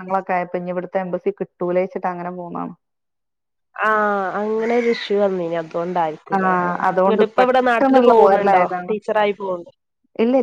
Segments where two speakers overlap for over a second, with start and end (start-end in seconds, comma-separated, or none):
6.4-8.9